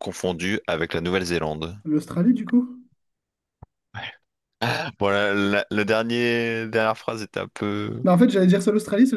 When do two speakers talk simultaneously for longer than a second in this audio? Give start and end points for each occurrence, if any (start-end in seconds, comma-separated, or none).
none